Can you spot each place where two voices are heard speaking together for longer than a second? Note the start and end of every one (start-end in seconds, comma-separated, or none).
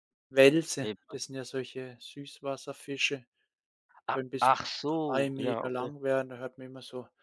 4.1-5.9